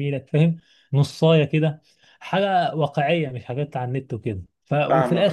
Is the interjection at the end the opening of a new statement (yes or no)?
no